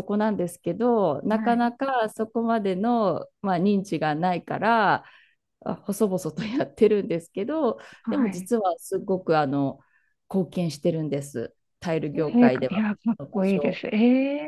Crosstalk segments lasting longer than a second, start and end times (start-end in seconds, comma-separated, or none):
12.1-13.8